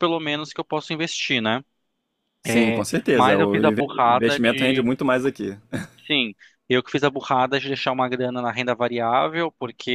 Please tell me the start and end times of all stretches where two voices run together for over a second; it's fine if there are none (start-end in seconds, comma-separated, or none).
2.5-4.8